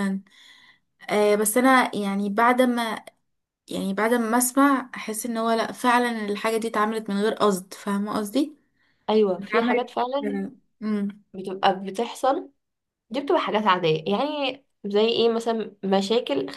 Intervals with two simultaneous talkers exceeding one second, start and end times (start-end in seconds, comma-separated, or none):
none